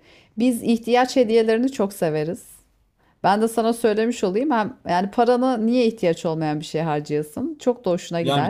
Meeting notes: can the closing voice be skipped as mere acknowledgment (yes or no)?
no